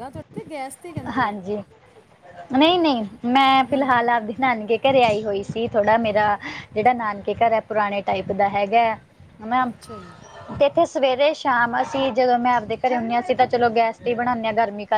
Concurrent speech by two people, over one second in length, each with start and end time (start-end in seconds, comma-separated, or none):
none